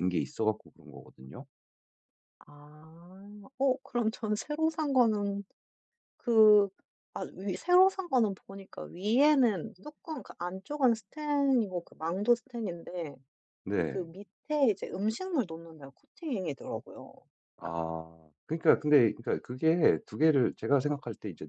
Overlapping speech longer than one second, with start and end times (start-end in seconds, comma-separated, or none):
none